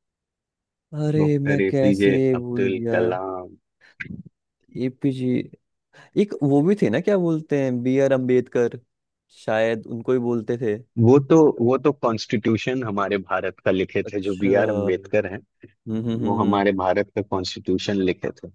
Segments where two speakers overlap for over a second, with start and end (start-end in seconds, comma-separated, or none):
1.2-3.0